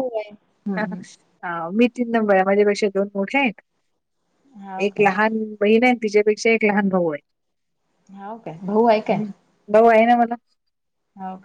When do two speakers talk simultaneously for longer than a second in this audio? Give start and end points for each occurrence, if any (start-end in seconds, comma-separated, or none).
none